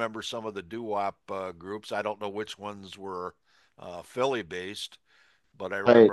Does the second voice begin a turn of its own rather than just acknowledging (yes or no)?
no